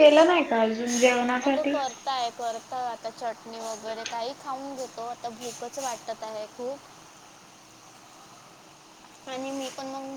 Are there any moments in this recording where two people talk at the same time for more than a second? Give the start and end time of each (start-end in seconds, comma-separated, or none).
none